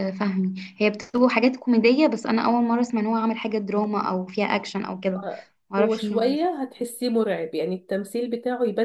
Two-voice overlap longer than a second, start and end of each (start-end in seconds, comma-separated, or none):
none